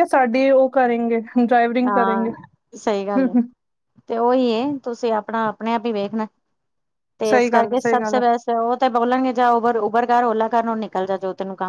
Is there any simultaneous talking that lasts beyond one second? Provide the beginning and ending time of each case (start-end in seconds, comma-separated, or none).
none